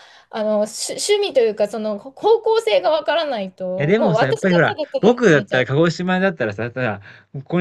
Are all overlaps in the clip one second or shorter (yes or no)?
no